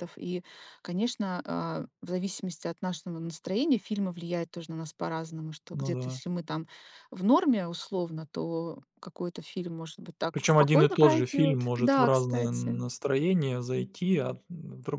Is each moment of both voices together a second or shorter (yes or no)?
no